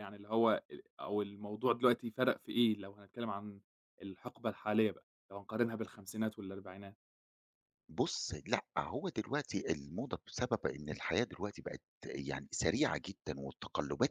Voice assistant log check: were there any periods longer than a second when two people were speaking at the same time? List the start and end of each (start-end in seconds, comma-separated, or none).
none